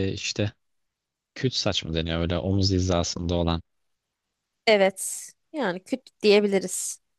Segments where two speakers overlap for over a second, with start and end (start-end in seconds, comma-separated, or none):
none